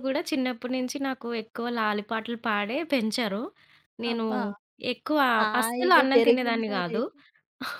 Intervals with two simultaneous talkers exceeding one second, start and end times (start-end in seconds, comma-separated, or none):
5.6-7.0